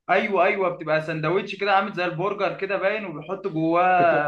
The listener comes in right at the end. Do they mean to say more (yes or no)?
yes